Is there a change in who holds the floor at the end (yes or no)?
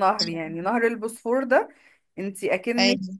no